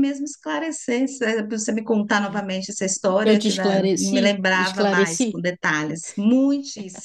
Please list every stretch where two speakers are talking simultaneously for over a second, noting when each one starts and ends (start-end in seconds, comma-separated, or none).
3.2-5.4